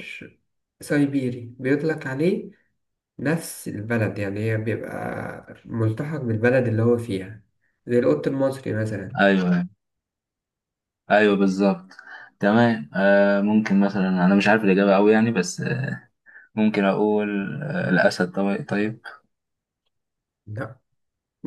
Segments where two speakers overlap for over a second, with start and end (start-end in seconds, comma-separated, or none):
none